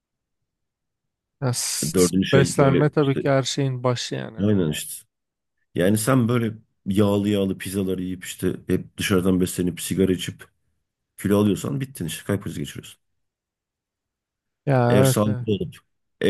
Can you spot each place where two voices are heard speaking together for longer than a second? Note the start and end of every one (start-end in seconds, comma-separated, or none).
1.8-3.2